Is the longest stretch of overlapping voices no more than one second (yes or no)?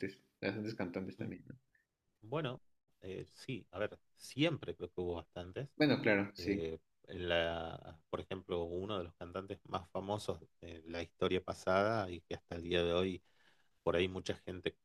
yes